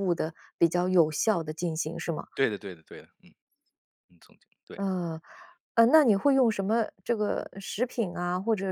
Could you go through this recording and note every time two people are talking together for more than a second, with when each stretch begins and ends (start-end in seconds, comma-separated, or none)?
none